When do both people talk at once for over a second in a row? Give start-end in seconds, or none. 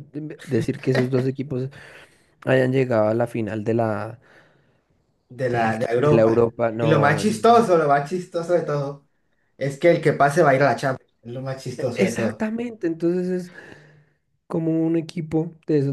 5.5-7.3